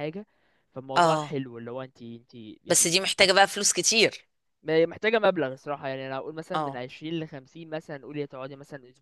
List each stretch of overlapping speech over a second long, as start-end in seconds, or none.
none